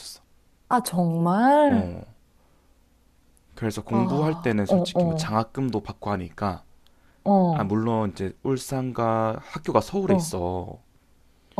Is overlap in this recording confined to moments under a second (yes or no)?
no